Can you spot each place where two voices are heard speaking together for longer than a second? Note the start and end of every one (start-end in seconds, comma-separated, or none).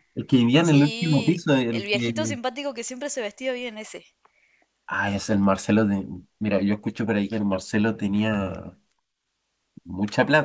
0.6-2.4